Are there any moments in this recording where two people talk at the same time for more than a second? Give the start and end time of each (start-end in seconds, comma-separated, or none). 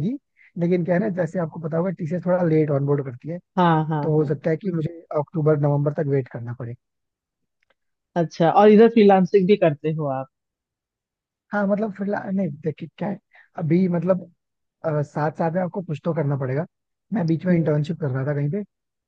none